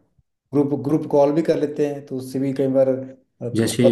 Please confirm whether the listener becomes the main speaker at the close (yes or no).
yes